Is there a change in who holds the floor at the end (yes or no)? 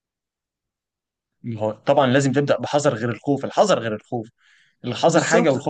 yes